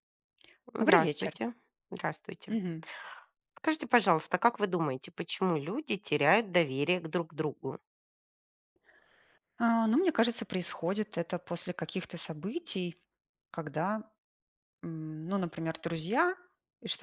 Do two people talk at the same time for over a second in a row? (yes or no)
no